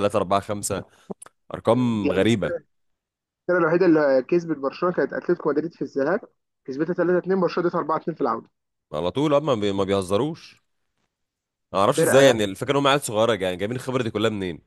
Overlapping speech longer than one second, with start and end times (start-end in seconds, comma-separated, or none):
none